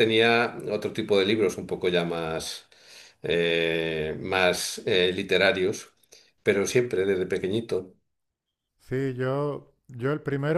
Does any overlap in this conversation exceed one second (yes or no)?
no